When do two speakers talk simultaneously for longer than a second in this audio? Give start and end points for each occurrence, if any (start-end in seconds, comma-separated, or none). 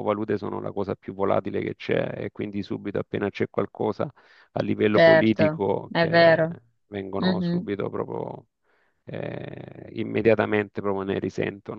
4.9-6.4